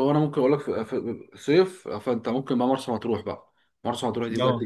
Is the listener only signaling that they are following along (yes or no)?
yes